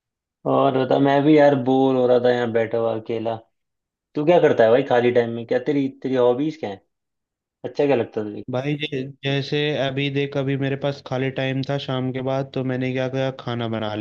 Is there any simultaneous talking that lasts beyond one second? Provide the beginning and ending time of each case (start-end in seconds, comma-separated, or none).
none